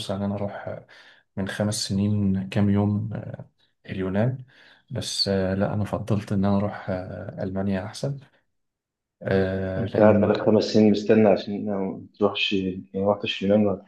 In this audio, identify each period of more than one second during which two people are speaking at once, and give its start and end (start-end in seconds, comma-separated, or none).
none